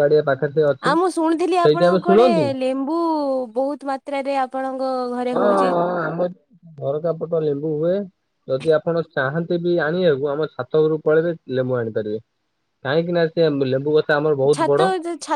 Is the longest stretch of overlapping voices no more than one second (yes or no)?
yes